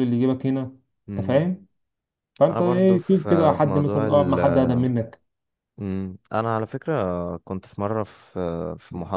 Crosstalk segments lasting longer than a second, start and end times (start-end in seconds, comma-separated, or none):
2.5-4.4